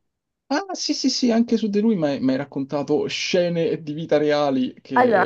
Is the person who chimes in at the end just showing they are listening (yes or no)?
no